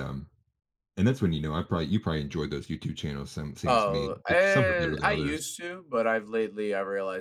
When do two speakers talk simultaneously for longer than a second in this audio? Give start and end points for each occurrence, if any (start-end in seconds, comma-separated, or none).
3.7-5.4